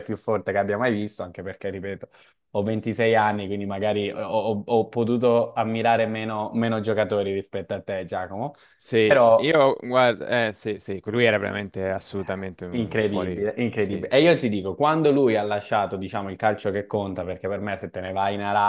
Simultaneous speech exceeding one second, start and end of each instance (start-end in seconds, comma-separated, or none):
12.7-14.1